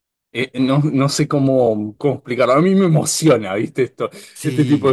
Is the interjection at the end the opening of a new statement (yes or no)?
yes